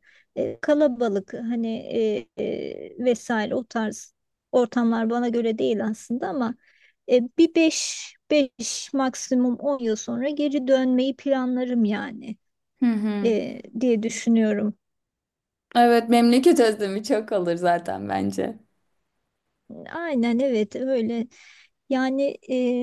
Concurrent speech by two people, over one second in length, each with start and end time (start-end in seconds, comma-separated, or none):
none